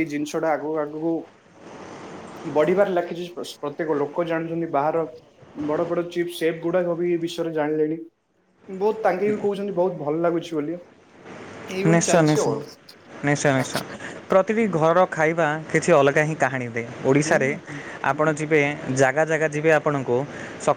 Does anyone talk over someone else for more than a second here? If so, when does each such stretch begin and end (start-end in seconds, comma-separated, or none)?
none